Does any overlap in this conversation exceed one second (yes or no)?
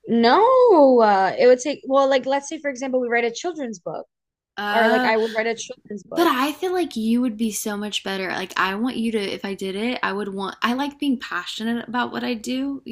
no